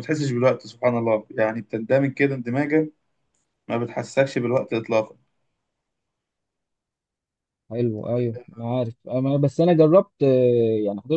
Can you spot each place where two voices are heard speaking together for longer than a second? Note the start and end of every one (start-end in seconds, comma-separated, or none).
none